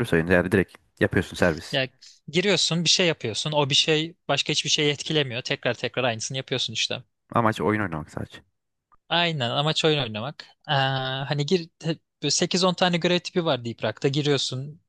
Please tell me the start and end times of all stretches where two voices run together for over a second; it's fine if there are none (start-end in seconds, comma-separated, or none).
none